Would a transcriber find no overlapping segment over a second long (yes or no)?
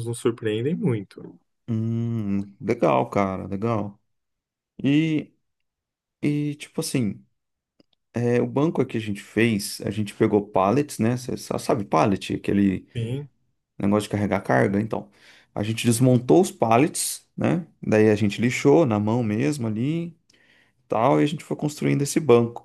yes